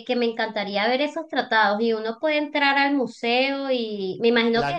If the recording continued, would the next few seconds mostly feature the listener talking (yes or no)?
no